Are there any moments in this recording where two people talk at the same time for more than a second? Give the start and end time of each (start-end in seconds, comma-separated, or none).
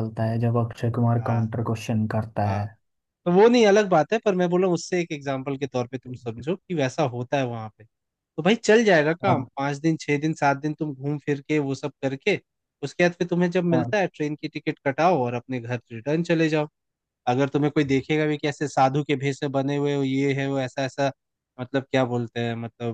none